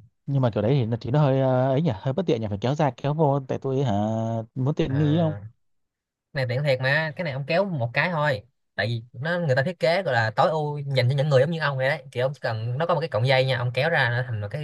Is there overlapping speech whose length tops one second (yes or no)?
no